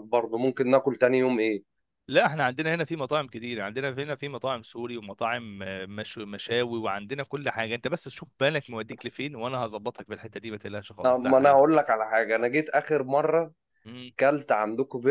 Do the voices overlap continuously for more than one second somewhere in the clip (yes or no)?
no